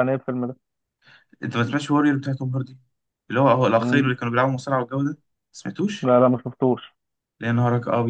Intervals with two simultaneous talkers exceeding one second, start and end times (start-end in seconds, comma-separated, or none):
none